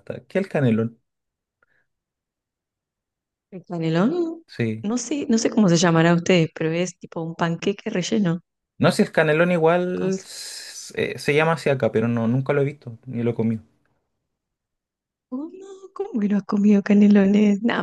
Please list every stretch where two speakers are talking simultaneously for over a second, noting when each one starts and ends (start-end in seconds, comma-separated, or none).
none